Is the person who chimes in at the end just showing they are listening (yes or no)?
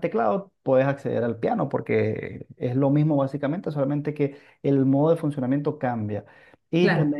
yes